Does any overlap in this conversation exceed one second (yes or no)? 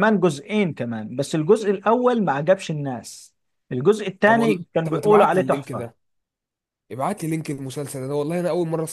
yes